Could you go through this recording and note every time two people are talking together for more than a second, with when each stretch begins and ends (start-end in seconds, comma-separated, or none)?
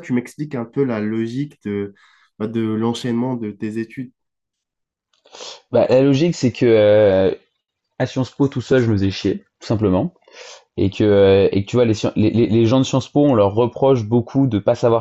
none